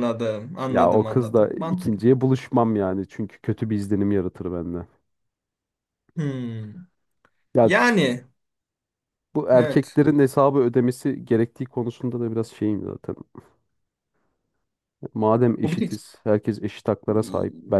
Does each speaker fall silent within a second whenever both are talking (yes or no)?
no